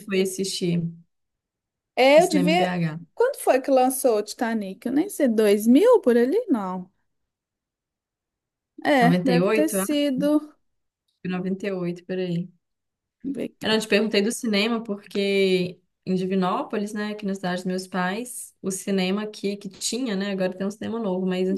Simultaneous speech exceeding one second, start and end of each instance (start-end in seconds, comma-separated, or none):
9.0-10.2